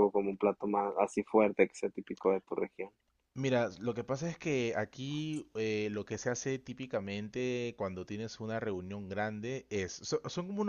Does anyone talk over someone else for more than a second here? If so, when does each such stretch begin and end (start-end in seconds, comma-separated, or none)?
none